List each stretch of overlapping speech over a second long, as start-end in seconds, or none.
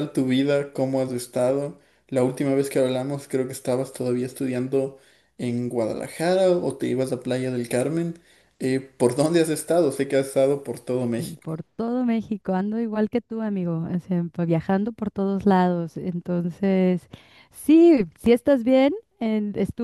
none